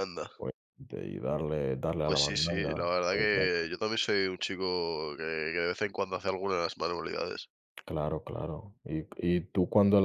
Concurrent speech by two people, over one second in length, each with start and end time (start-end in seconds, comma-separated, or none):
2.0-3.6